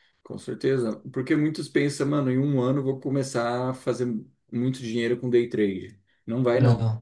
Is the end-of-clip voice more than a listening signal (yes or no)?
no